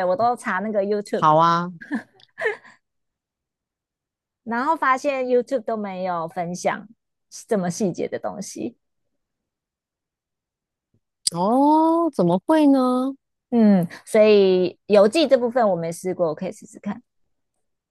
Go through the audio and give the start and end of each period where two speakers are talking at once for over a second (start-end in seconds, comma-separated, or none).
none